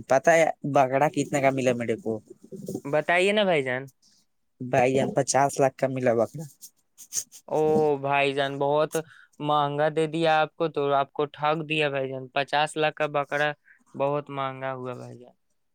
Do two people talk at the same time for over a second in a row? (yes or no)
no